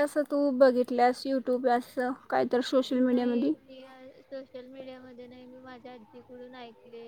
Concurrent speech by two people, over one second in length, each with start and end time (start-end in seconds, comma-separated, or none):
none